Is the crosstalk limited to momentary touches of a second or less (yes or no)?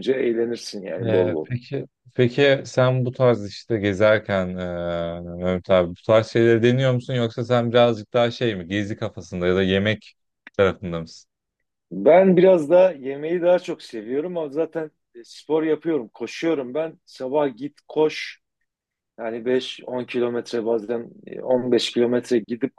yes